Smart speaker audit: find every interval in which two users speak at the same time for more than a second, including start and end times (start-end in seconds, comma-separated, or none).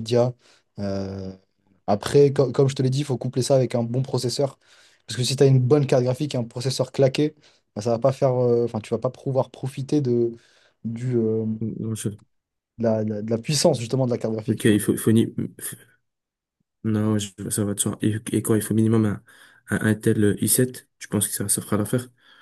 none